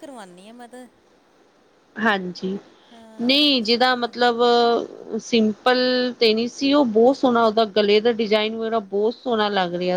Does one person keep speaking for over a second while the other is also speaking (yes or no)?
yes